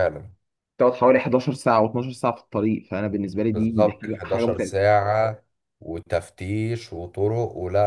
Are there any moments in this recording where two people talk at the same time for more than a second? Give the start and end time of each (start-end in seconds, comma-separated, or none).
3.5-4.9